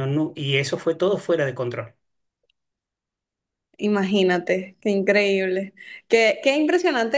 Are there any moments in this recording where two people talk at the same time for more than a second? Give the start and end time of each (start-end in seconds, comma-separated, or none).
none